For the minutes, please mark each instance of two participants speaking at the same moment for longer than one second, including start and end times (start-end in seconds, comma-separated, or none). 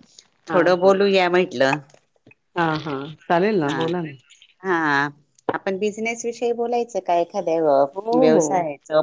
none